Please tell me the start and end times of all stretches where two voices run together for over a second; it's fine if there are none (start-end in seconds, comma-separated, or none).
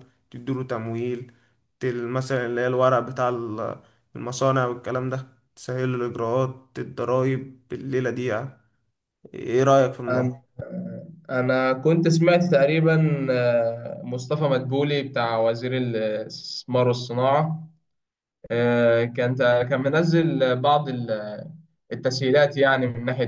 none